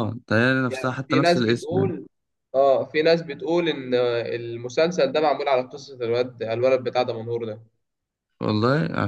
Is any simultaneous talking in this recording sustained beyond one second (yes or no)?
yes